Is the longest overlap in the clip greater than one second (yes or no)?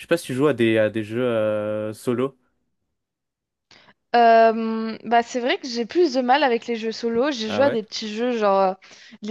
no